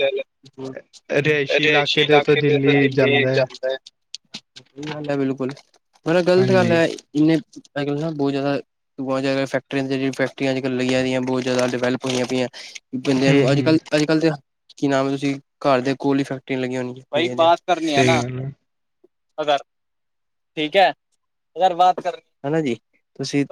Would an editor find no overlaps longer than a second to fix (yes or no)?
no